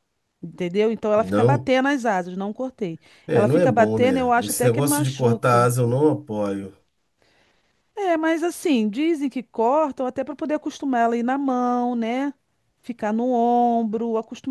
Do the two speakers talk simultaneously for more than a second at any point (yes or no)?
yes